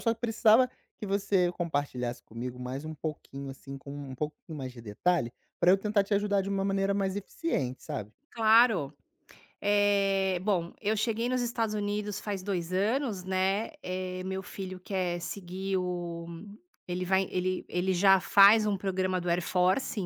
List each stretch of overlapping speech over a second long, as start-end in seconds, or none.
none